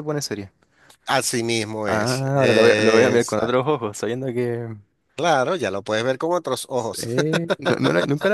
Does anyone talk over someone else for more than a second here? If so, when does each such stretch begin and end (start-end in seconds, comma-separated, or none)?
1.9-3.7